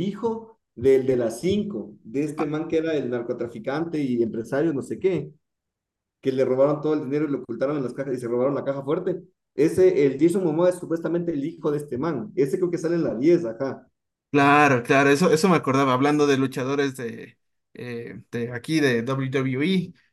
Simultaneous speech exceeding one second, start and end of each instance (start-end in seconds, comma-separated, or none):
none